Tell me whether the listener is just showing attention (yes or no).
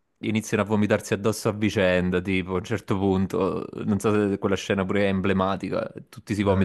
yes